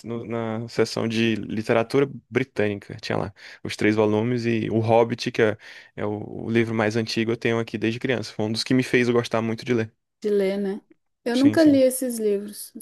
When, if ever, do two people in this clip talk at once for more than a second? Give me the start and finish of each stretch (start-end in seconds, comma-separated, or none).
none